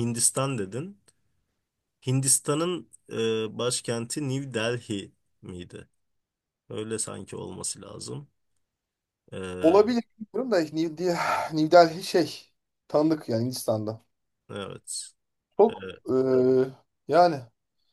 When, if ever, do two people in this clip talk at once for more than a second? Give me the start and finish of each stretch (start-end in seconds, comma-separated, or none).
none